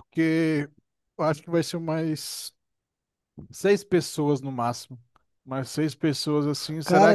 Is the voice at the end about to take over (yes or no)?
yes